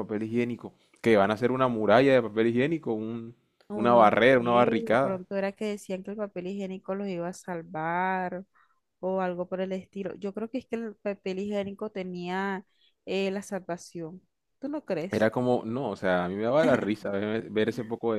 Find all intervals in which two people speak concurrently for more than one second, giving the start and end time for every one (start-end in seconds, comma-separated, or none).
3.7-5.2